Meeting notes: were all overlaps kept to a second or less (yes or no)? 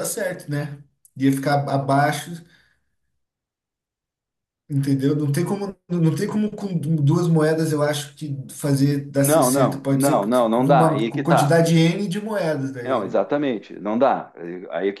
no